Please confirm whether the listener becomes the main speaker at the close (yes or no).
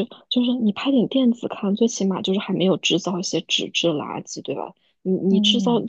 no